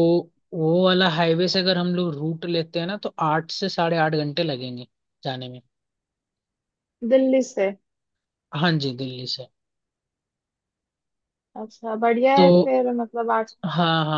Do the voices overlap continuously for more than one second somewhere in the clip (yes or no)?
no